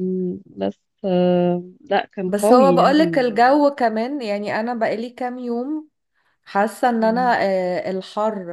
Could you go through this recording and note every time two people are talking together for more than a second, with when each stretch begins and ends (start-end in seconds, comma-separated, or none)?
2.2-3.5